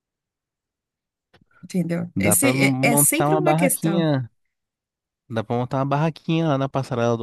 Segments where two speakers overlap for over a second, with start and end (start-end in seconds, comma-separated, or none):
2.2-4.1